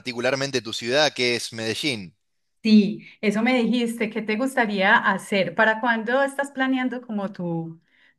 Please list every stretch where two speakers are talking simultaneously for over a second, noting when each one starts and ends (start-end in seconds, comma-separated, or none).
none